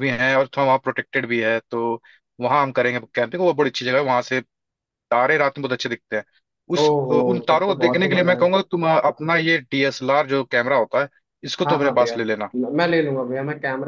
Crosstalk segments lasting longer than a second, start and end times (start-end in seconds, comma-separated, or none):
6.8-8.5